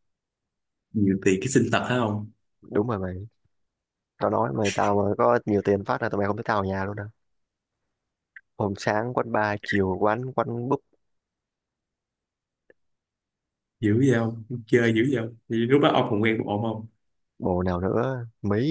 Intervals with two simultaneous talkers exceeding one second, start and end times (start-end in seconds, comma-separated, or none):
none